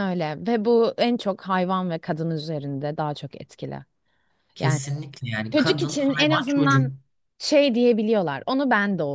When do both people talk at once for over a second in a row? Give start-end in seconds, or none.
5.5-6.9